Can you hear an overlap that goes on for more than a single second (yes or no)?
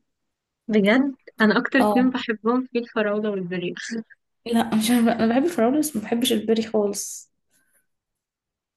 no